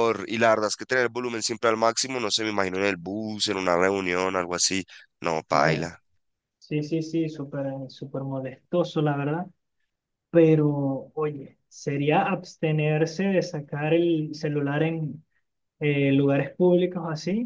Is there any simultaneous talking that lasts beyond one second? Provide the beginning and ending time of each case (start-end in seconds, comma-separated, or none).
none